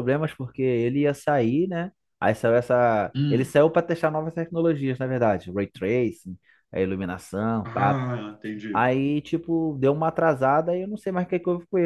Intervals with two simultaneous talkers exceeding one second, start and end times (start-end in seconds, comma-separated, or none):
none